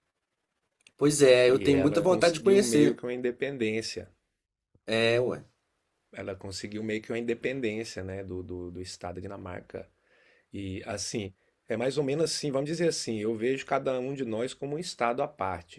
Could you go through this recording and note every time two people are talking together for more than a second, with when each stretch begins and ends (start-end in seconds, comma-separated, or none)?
1.5-3.0